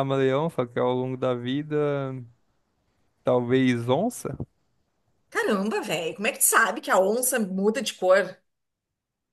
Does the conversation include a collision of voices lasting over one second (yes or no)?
no